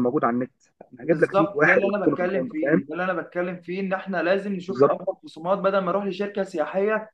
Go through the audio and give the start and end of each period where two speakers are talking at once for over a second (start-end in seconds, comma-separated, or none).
1.0-2.8